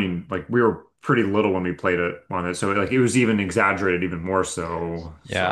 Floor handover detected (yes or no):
yes